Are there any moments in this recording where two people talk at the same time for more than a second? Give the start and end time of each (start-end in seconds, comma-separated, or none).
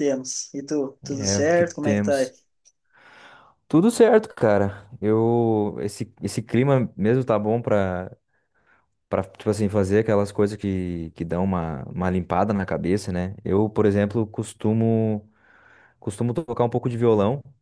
1.0-2.3